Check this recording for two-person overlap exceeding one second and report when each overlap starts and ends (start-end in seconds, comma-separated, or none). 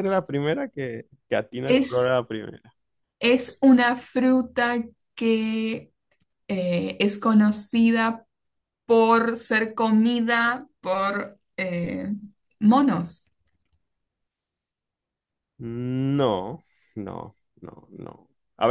none